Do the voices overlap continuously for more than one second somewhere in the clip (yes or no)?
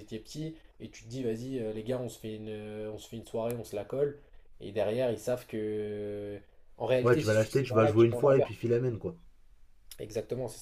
yes